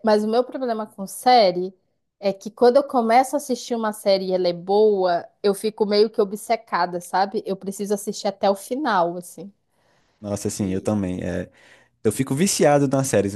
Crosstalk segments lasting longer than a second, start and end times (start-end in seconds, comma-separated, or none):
none